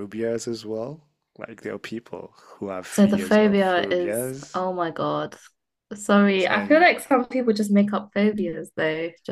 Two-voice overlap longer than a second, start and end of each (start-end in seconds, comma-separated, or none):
2.9-4.6